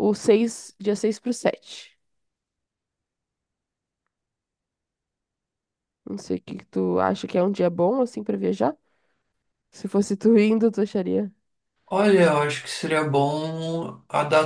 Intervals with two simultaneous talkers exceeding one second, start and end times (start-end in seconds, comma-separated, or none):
none